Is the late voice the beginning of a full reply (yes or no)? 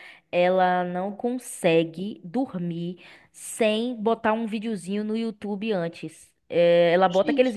no